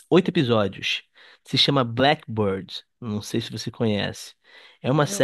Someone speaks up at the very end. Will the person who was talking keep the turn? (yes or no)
yes